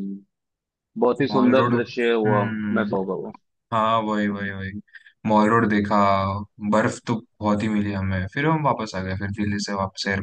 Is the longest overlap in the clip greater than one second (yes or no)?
yes